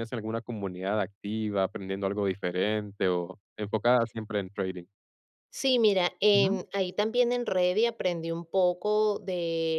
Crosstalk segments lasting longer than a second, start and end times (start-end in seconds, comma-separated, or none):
none